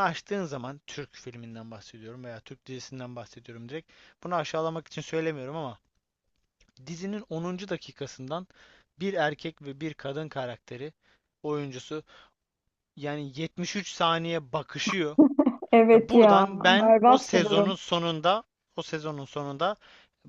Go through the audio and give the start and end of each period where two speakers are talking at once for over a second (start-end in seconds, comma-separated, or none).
15.9-17.8